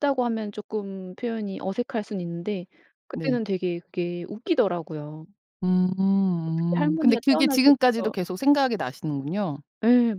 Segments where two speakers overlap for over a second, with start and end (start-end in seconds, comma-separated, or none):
6.5-8.1